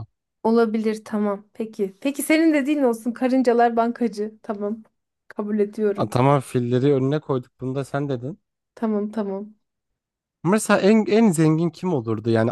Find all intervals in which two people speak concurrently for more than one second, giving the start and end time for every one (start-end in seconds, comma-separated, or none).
none